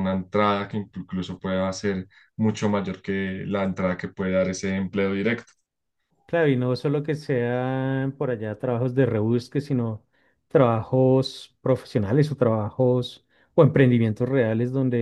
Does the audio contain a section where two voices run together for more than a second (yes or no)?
no